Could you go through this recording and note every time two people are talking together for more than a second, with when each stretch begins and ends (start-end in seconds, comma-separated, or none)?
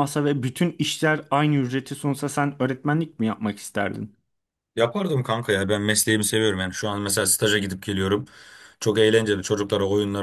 none